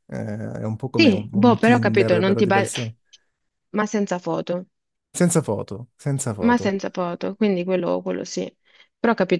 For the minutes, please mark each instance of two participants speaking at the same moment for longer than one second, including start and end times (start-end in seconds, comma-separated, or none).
1.0-2.7